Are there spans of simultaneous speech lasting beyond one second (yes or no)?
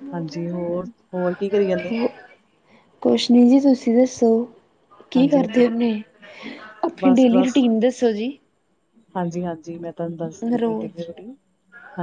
no